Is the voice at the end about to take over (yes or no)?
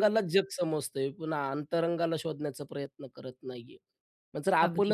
no